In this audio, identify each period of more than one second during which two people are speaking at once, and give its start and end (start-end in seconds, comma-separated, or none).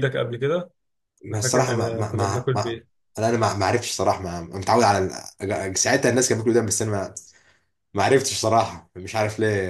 1.3-2.8